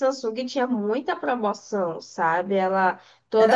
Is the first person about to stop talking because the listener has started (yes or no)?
no